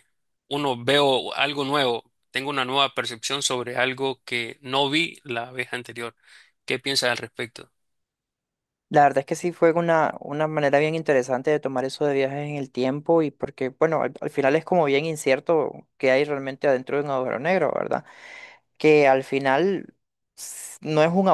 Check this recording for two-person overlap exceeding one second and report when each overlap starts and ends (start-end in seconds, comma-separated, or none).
none